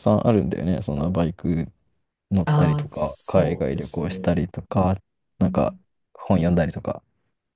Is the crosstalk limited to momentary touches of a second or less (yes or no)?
no